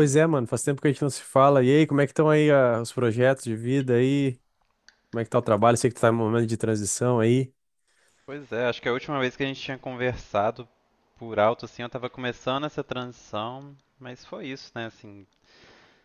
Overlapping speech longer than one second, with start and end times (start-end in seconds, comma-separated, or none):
none